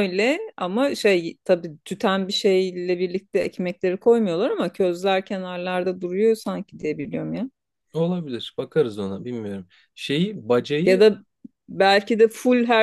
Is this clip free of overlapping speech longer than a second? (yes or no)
yes